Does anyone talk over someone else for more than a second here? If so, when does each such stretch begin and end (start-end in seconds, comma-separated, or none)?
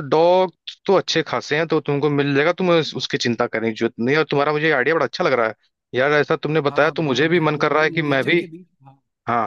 6.7-8.4